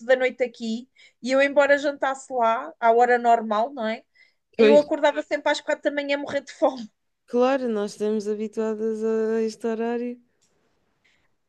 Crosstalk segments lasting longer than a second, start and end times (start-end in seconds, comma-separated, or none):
none